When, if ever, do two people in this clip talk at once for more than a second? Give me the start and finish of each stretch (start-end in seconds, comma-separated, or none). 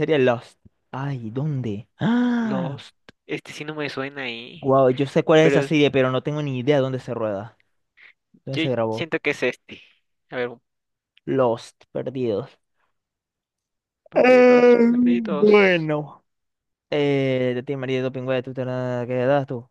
14.1-15.6